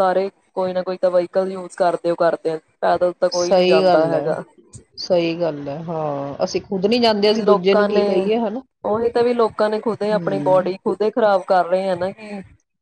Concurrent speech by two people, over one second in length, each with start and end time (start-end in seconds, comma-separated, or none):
none